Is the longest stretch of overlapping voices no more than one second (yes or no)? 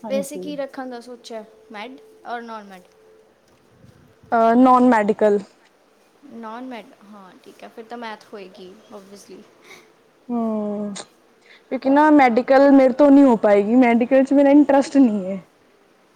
yes